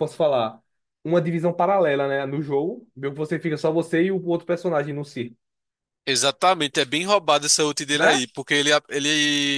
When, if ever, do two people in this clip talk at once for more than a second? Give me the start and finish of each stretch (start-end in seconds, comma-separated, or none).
none